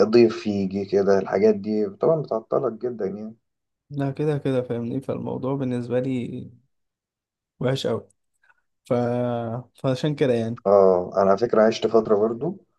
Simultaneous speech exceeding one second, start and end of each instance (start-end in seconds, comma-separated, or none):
none